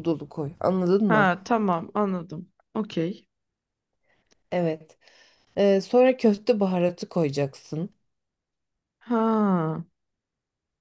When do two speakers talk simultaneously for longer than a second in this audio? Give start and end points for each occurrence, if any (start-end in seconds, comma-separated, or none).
none